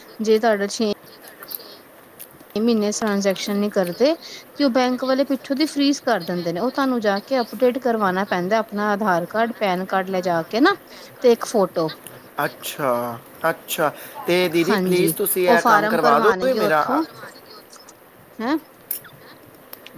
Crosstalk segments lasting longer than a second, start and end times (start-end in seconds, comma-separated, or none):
14.7-16.8